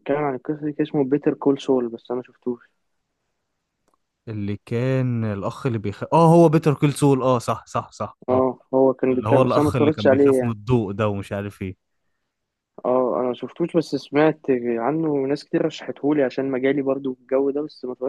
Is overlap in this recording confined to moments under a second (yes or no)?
no